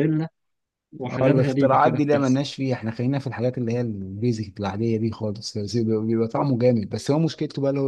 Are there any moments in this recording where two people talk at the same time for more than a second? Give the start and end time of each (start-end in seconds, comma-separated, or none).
1.2-2.4